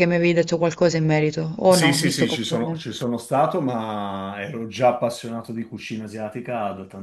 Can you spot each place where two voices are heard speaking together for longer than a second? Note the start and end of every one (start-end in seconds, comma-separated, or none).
1.6-2.9